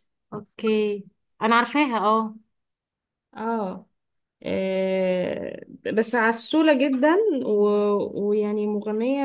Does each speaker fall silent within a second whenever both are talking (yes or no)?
yes